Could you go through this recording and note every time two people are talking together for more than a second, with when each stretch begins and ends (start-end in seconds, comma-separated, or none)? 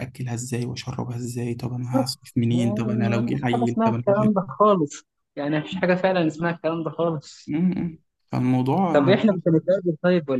2.5-4.3